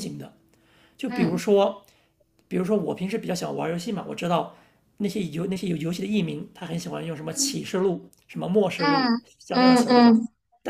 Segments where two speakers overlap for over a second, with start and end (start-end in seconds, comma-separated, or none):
8.8-10.2